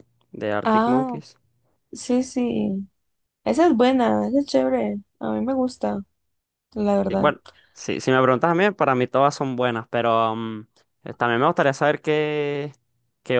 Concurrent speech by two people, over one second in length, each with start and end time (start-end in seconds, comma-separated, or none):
none